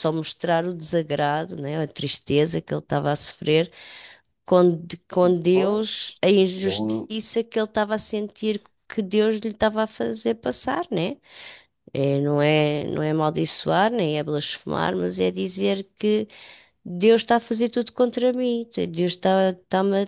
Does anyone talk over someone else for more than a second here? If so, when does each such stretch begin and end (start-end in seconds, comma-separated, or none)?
5.5-7.1